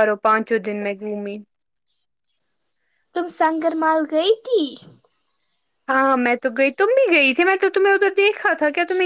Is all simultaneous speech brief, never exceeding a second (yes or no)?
yes